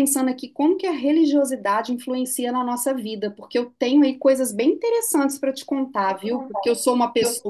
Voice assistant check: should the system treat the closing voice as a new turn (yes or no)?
no